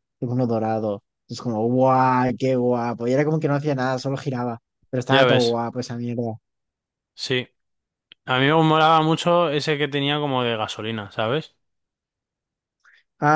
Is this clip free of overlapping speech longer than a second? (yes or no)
yes